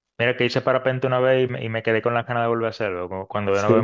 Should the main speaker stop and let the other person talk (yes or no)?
yes